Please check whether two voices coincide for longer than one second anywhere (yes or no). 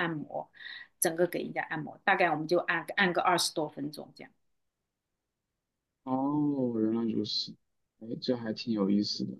no